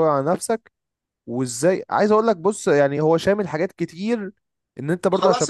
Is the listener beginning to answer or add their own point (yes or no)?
no